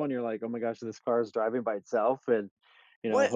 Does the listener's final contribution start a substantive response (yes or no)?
yes